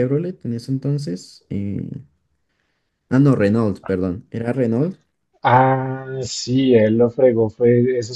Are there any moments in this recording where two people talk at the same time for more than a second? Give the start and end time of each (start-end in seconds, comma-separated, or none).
none